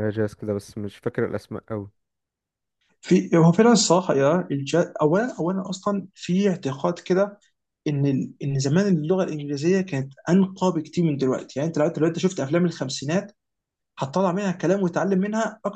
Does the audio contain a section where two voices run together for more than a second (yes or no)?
no